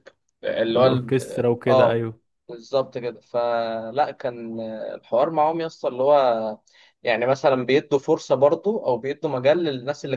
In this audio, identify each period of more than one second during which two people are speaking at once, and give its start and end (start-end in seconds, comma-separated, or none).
0.7-2.0